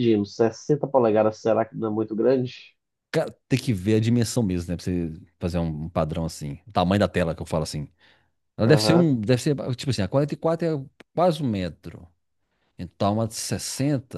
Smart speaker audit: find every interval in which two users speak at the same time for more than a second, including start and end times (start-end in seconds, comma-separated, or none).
none